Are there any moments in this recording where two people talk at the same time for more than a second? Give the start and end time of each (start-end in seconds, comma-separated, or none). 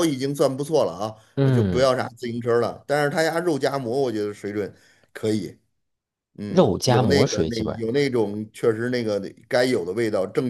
6.5-7.8